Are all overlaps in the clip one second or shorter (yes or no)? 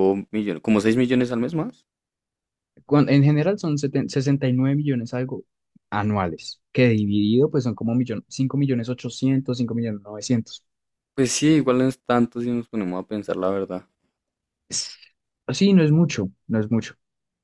yes